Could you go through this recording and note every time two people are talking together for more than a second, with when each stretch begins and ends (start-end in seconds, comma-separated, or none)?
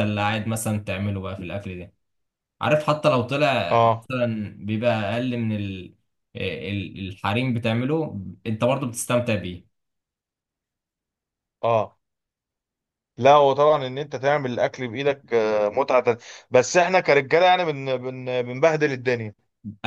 none